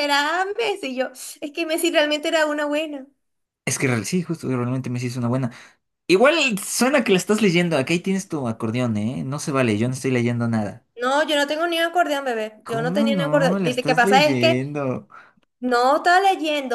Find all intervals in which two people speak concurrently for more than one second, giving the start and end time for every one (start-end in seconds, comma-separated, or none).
12.6-14.6